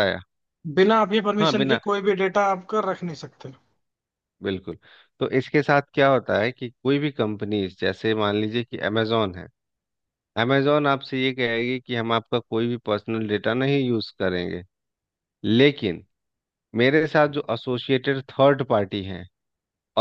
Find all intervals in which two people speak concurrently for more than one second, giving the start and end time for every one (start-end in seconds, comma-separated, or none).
none